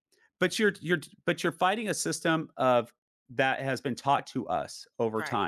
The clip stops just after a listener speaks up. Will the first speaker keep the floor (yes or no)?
yes